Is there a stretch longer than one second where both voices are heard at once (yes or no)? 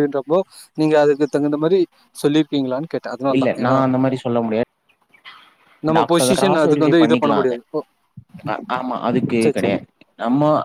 yes